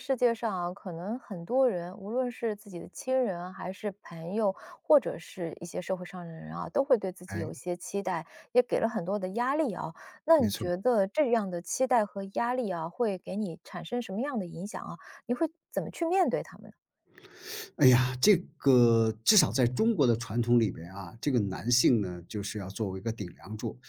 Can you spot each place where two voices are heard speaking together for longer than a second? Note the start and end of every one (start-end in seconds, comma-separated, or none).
none